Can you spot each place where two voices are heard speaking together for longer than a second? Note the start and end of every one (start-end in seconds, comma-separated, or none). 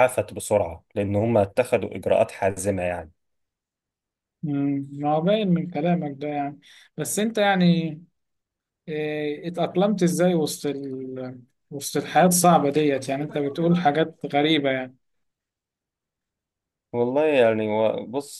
none